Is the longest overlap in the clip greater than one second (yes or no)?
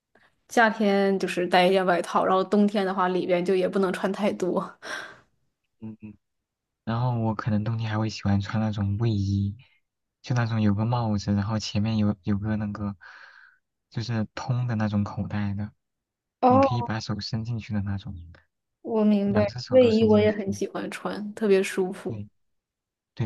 yes